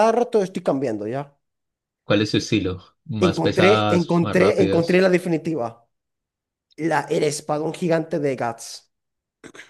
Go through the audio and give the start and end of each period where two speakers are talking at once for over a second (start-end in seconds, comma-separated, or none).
3.3-5.0